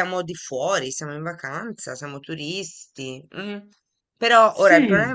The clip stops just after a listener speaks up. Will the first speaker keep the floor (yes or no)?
yes